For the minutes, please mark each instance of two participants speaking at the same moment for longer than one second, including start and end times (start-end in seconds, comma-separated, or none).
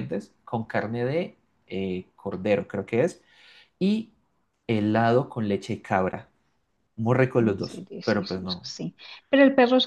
7.4-8.6